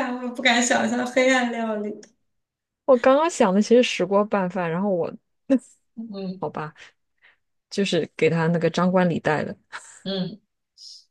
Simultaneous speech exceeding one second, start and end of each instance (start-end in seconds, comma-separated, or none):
none